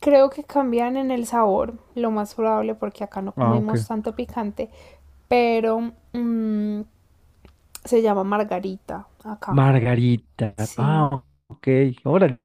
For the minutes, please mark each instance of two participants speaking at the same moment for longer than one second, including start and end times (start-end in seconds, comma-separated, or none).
none